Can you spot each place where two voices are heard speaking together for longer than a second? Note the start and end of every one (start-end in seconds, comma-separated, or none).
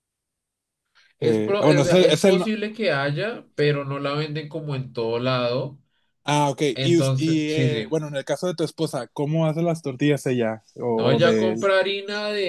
1.2-2.5, 6.7-8.0